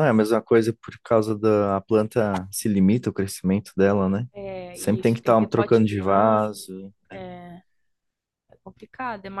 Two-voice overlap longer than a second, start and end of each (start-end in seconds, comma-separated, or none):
4.7-6.6